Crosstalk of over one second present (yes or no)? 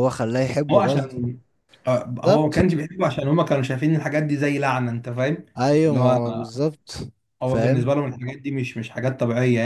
no